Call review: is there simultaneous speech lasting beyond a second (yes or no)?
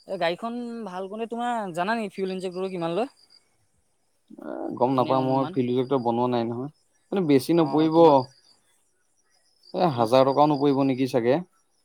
no